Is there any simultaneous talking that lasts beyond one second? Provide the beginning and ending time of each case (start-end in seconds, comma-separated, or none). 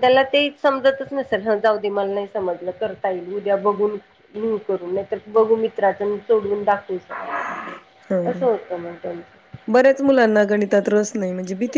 none